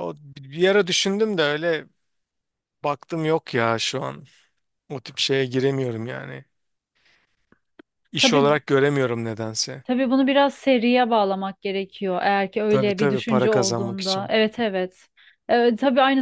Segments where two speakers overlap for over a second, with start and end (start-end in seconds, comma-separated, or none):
12.7-14.3